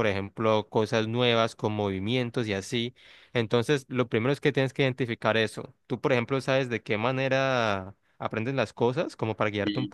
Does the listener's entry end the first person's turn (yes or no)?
yes